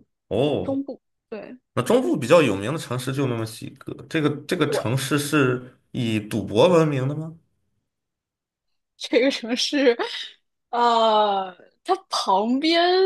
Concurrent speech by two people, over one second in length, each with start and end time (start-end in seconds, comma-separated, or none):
none